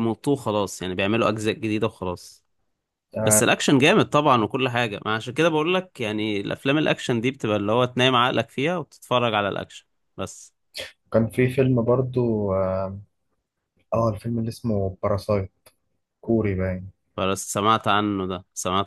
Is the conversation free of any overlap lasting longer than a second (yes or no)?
yes